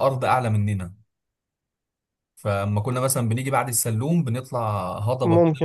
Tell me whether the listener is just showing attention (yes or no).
yes